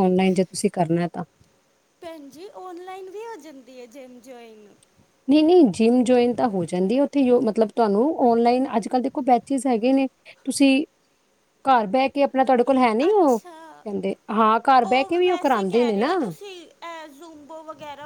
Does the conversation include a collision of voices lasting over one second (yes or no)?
no